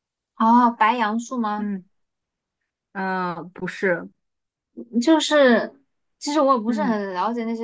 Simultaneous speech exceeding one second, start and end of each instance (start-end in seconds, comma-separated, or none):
none